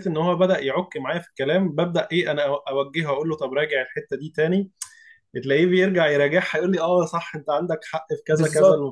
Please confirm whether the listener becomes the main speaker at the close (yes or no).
yes